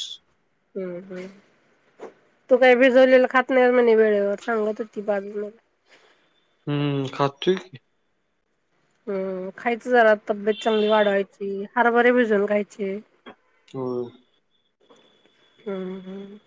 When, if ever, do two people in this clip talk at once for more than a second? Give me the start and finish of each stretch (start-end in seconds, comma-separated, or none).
none